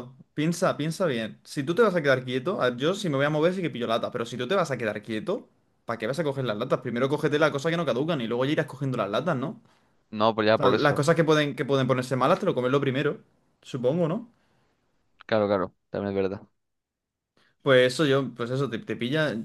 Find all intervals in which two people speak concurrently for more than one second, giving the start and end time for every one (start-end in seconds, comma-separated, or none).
none